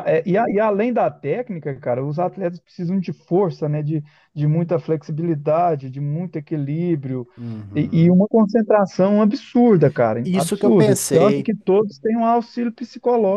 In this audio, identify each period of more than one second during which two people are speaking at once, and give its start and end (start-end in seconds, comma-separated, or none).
10.2-11.5